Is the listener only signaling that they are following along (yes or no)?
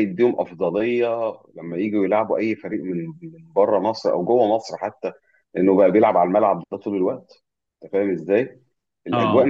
yes